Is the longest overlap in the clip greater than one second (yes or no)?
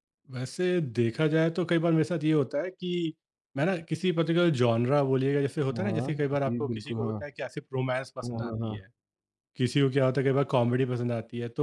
yes